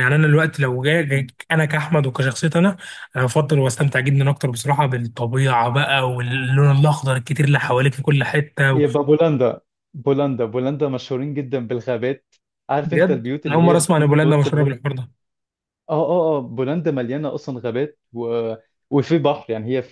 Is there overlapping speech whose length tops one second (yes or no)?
yes